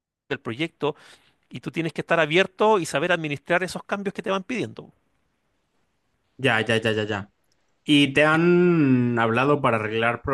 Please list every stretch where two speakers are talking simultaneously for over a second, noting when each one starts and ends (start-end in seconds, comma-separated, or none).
none